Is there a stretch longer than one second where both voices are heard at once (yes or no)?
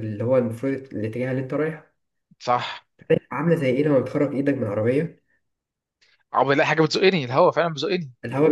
no